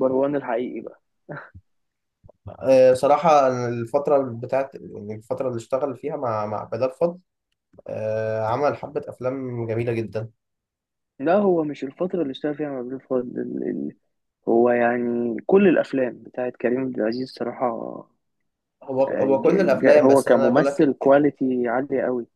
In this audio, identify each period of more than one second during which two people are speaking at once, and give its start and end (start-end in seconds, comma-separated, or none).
19.1-20.9